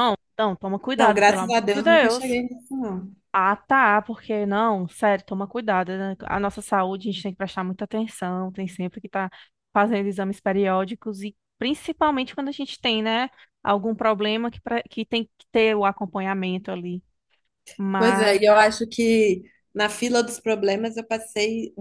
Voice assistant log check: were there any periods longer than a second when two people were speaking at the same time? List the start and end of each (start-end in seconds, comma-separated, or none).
1.0-2.4